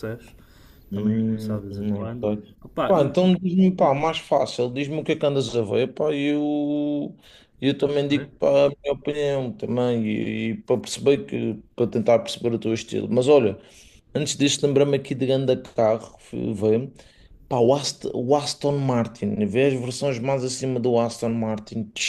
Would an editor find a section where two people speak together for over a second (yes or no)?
yes